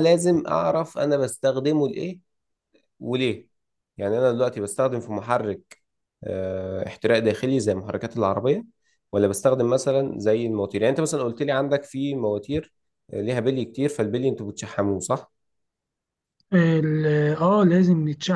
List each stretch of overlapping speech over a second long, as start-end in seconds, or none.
none